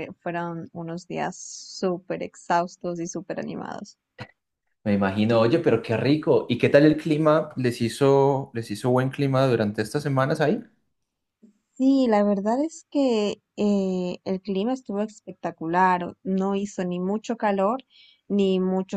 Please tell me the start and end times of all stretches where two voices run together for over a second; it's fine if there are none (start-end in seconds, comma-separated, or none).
none